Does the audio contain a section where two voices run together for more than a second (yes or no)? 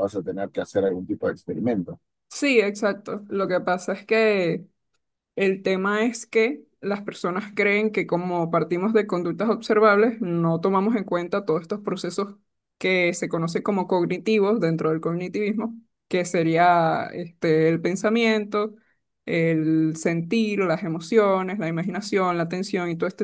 no